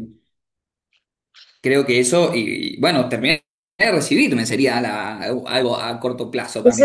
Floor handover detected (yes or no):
yes